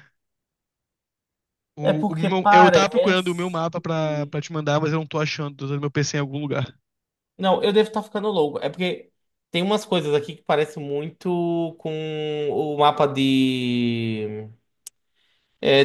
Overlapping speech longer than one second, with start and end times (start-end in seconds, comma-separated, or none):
1.8-3.5